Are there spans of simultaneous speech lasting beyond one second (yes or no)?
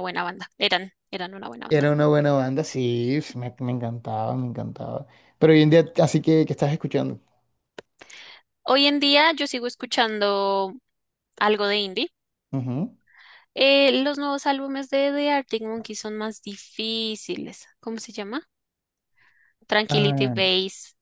no